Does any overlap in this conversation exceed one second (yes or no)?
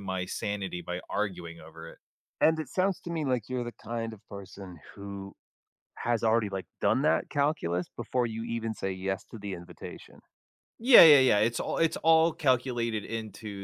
no